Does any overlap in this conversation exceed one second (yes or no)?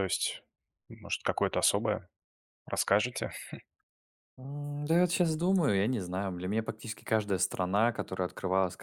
no